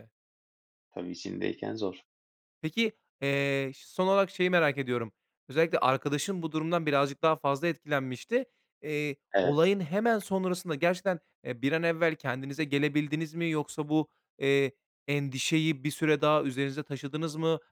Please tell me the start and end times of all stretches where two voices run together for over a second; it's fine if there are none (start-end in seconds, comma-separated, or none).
none